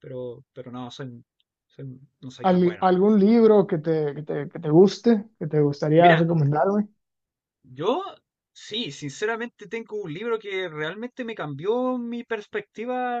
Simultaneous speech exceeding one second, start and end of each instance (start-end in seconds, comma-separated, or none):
none